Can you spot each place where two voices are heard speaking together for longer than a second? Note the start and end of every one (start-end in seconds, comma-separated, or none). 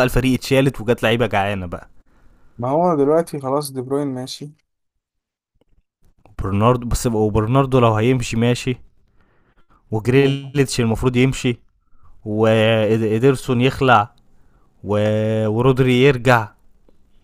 none